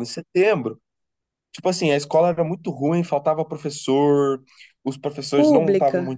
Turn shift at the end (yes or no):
no